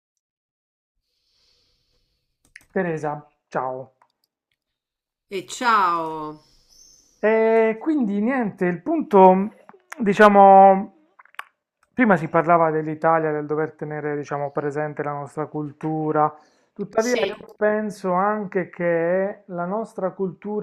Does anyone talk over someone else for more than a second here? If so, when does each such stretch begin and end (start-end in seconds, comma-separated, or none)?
none